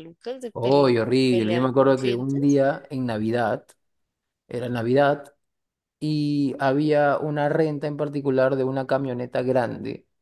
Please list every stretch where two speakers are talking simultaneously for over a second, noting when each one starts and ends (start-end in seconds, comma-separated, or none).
0.5-2.6